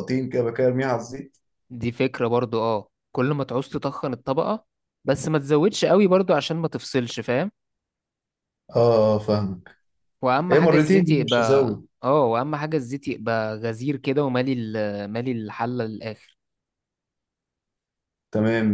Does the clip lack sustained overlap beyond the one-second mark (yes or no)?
no